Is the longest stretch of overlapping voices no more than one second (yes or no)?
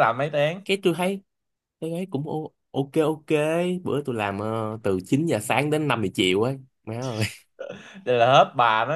yes